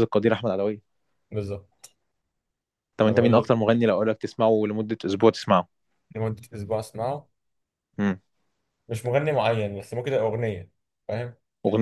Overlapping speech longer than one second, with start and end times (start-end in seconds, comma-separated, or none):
none